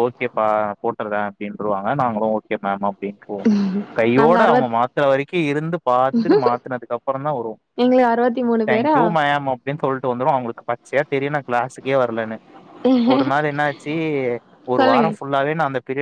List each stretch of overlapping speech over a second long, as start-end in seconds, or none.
none